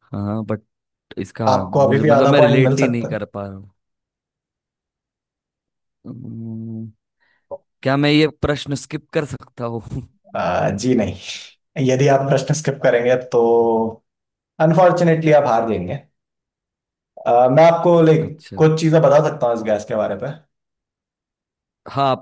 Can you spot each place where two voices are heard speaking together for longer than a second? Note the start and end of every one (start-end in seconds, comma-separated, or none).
1.5-3.1